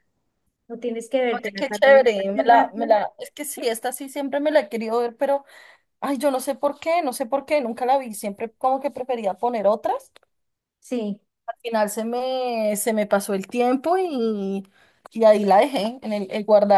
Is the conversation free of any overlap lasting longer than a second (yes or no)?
no